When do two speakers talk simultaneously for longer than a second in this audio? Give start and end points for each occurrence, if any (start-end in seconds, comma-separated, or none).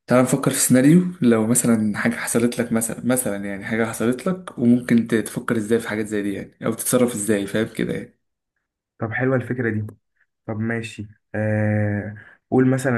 none